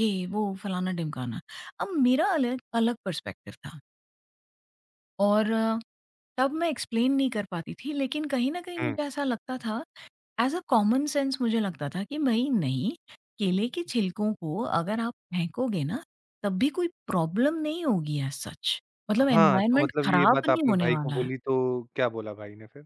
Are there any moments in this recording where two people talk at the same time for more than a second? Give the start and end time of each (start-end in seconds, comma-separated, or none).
19.3-21.3